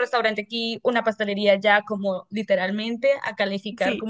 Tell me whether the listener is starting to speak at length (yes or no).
no